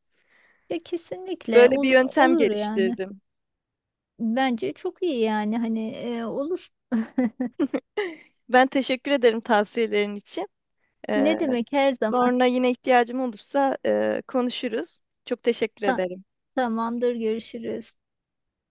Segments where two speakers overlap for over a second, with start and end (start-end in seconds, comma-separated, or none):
1.5-3.0